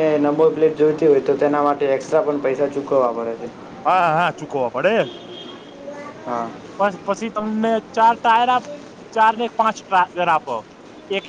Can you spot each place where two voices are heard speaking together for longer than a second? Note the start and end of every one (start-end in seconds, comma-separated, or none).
none